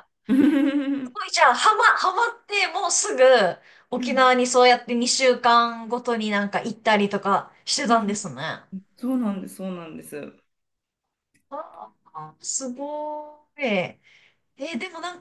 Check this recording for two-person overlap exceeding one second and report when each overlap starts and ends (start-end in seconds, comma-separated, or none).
none